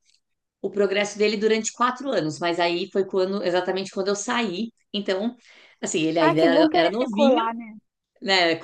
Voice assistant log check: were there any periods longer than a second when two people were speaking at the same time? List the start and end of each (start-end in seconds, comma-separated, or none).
6.2-7.4